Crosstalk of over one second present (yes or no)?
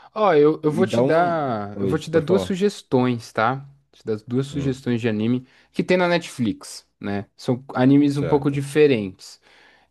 yes